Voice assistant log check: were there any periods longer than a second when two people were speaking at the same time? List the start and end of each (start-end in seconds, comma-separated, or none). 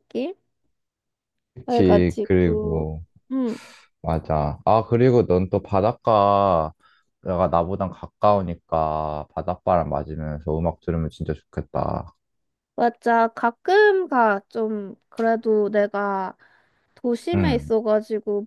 1.6-2.9